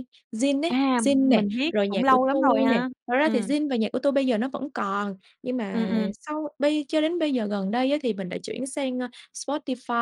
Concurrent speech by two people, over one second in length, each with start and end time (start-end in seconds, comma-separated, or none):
0.7-3.5